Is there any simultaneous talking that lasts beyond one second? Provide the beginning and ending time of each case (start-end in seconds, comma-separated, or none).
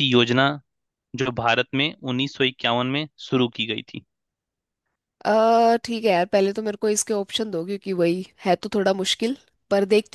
none